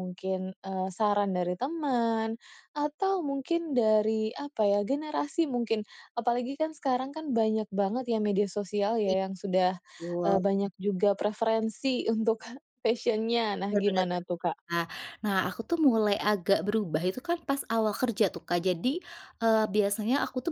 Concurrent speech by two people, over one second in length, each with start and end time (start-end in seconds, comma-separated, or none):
none